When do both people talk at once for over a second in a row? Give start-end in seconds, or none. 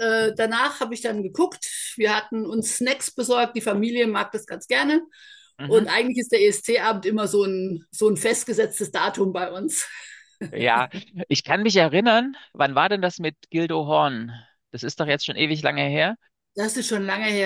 none